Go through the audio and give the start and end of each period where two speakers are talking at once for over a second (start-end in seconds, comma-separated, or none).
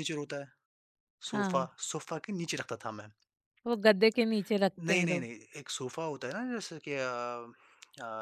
none